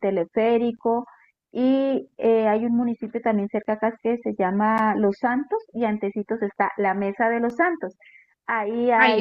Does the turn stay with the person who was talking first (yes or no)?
yes